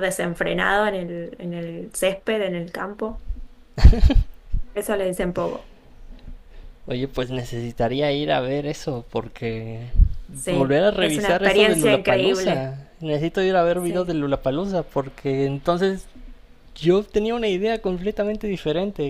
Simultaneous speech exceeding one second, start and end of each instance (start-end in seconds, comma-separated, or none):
10.5-12.7